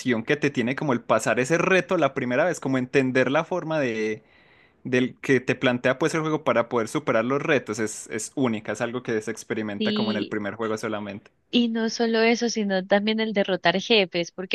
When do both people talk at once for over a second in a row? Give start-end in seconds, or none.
none